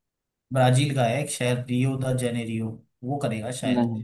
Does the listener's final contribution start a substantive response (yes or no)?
no